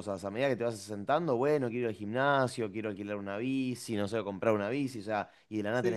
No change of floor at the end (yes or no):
yes